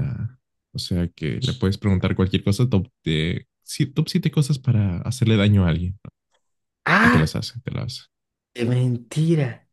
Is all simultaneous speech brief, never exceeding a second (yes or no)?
yes